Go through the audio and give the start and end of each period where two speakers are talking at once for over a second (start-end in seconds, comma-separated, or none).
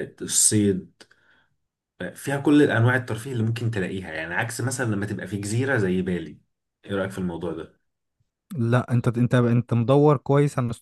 none